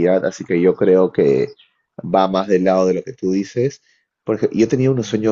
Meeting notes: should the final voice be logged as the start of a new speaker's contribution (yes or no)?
no